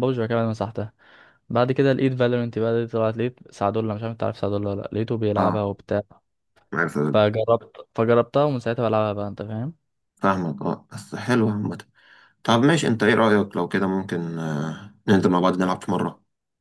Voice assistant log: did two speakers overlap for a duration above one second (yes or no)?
no